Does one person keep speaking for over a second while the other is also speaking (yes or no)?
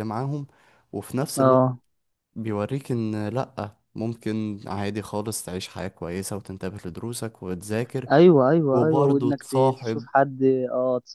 yes